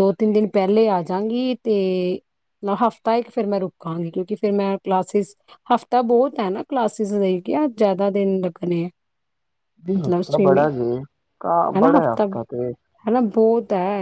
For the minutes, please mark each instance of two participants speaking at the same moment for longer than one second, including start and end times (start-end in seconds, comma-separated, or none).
none